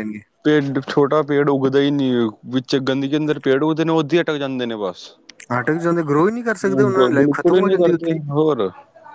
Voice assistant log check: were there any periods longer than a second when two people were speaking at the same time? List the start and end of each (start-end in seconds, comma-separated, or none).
6.6-8.2